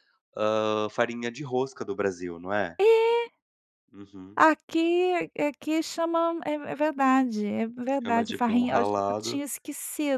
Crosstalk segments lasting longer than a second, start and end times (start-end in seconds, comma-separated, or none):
8.0-9.4